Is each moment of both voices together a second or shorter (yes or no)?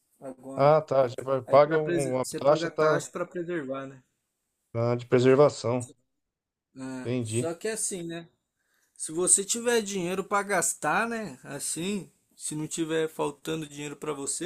no